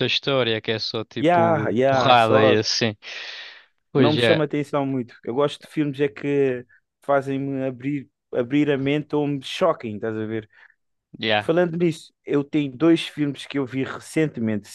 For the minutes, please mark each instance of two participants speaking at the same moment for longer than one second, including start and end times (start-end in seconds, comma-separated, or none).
1.2-2.6